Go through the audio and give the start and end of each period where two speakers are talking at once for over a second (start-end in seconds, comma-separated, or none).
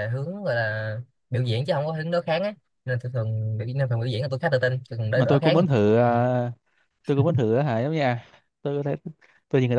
none